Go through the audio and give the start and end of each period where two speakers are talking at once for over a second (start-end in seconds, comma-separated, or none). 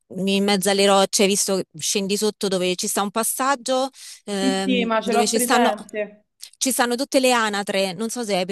4.4-5.7